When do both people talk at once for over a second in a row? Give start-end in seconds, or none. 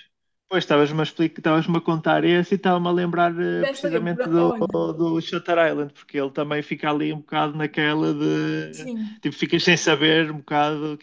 3.5-4.8